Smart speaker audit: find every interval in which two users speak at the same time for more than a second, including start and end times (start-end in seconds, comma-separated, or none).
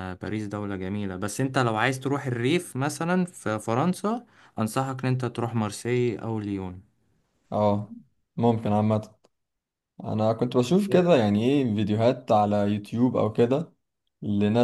none